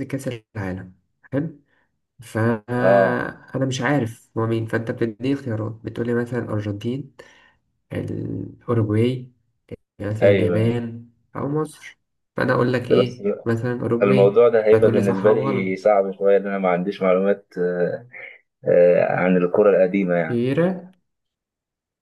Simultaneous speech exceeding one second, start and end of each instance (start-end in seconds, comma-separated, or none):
14.0-15.8